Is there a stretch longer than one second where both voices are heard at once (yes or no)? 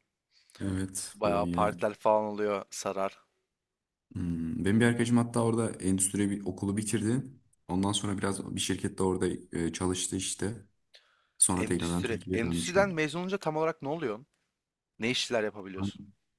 yes